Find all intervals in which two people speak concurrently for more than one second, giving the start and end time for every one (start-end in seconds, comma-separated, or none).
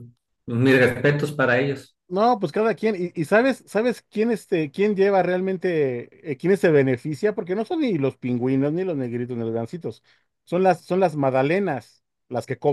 none